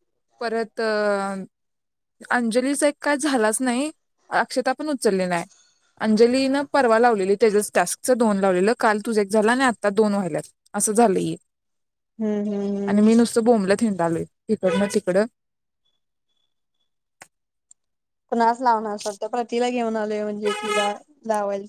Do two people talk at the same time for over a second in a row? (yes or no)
no